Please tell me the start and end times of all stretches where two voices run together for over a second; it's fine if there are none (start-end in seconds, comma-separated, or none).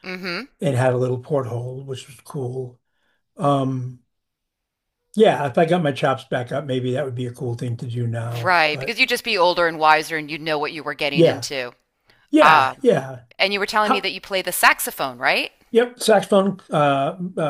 none